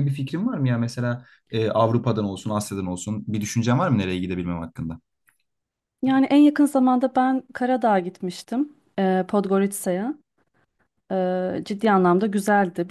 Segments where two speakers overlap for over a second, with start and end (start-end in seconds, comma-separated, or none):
none